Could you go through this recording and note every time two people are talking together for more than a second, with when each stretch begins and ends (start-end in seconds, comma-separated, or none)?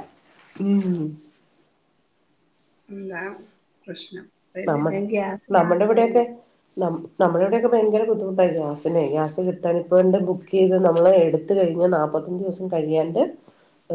none